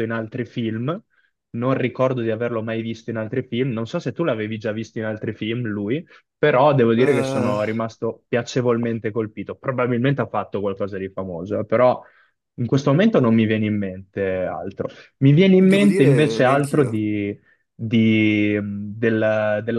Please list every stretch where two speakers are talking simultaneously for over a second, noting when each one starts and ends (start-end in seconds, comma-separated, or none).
15.6-17.0